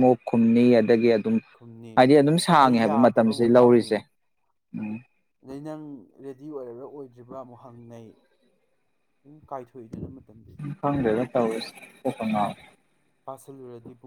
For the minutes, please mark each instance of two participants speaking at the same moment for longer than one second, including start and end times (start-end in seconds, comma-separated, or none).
2.6-3.9